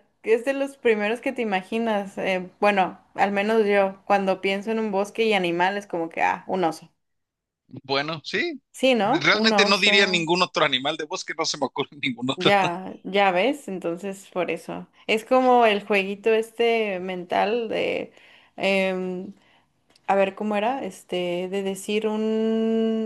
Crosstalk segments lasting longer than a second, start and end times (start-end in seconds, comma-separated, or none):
9.0-10.3